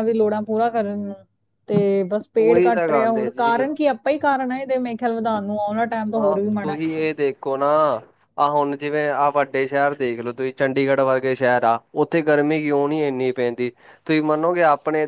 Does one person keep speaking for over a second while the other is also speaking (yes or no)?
yes